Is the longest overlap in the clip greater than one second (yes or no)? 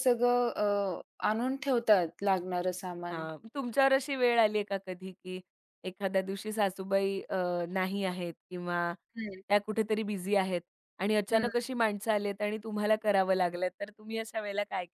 no